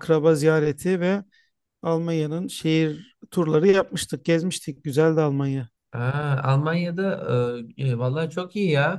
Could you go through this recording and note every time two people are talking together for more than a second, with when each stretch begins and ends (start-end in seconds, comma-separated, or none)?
none